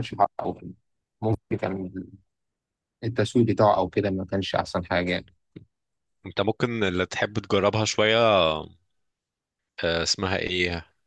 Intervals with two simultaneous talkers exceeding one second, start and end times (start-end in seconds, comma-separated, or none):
none